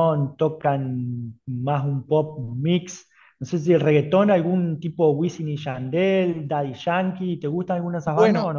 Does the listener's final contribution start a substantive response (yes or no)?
yes